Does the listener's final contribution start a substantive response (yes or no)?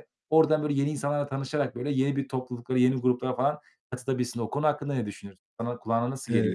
yes